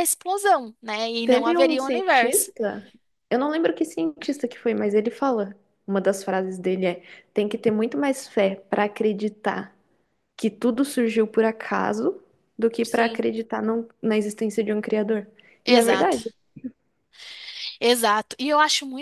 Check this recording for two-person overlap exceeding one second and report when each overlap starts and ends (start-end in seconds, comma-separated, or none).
1.2-2.5